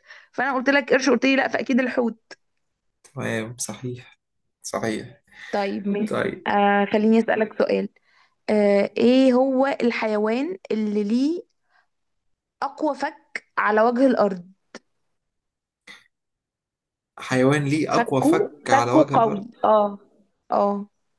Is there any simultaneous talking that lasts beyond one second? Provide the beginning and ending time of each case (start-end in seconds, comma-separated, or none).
17.9-19.5